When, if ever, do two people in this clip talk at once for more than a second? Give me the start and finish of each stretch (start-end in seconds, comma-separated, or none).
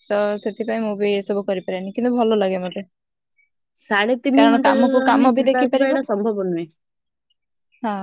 4.4-6.0